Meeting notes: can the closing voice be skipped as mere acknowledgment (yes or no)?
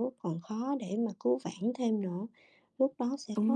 yes